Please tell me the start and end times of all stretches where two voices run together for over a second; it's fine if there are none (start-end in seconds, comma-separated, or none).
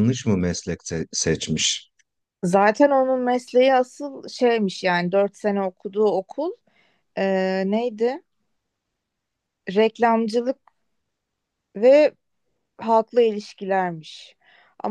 none